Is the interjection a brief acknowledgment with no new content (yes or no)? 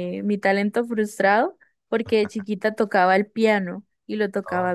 yes